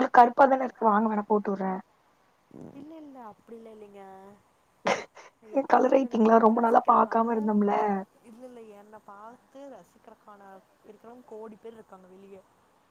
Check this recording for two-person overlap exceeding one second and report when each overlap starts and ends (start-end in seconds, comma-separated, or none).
5.6-7.3